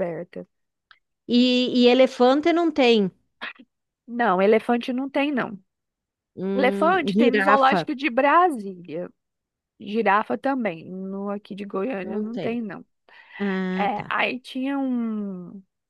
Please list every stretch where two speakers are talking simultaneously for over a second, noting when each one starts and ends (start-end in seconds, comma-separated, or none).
6.5-7.9